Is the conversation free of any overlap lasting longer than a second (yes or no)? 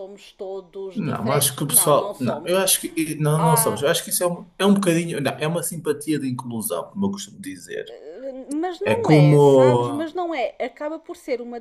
no